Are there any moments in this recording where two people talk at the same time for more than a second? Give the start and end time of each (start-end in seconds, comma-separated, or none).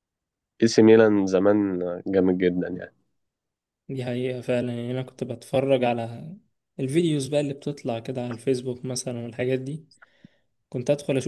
none